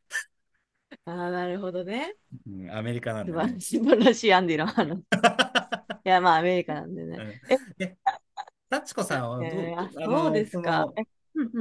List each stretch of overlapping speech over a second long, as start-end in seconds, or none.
9.4-11.0